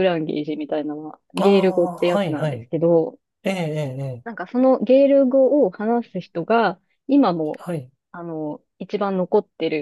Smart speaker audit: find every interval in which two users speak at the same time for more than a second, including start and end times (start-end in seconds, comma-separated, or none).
1.4-2.7